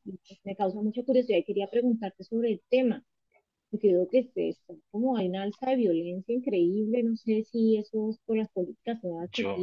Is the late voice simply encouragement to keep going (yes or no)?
yes